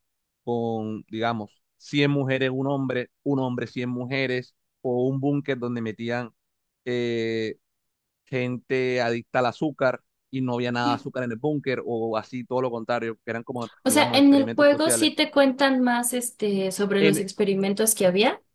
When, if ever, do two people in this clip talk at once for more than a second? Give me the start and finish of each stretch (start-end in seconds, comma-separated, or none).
13.8-15.1